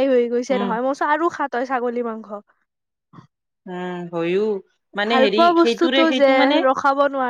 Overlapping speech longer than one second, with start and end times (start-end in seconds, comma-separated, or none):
none